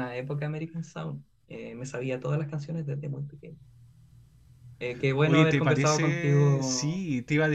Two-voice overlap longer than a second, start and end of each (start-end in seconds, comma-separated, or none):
5.2-7.0